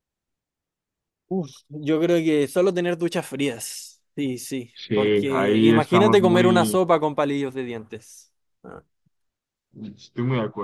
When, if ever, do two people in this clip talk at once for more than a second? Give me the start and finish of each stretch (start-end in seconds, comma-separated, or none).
4.7-6.8